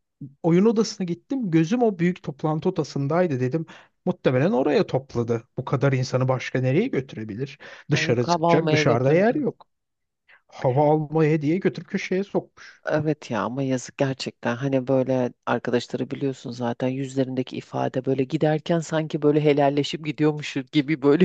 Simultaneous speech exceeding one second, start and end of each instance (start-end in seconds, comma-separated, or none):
7.9-9.5